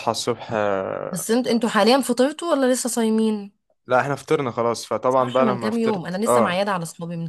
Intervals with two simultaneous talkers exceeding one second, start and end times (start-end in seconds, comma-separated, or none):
5.1-6.6